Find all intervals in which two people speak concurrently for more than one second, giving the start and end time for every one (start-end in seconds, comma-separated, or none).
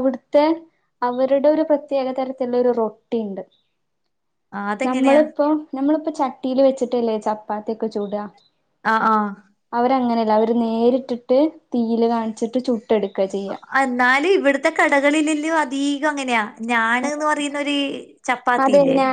none